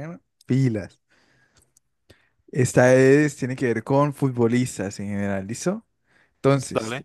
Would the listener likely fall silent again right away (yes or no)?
yes